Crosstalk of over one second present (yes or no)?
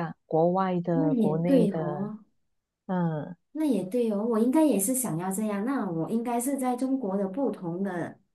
yes